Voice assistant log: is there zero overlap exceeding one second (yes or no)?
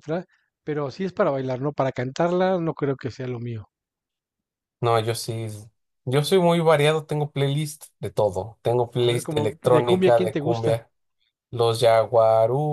no